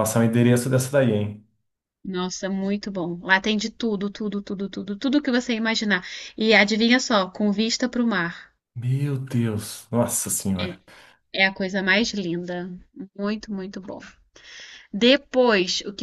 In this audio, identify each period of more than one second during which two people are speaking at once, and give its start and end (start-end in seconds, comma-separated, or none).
none